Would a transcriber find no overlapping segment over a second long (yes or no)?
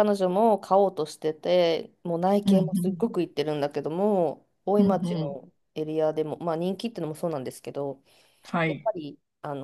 yes